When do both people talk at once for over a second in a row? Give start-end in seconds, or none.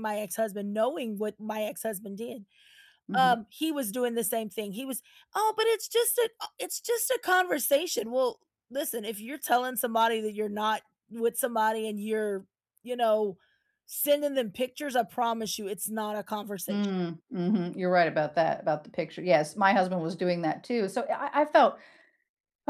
none